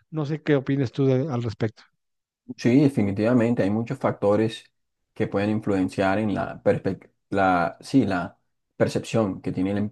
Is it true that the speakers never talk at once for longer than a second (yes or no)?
yes